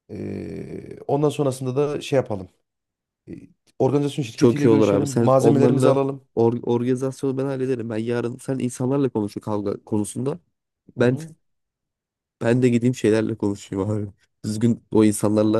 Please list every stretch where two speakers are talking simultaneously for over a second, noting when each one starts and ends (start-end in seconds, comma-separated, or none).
4.4-5.9